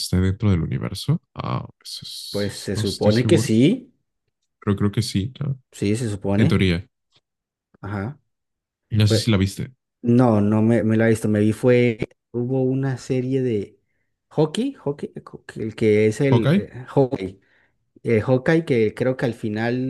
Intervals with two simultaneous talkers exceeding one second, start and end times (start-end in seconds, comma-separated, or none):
2.3-3.5